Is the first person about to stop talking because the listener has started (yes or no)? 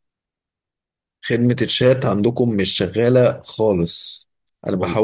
no